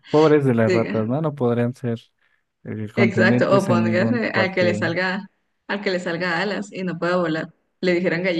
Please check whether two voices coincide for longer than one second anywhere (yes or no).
yes